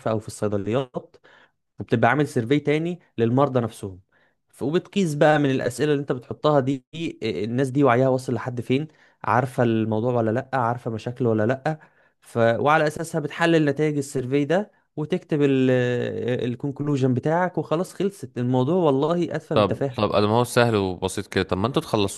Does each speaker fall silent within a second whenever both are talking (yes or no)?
yes